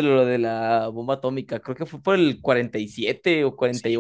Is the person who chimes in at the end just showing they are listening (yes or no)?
no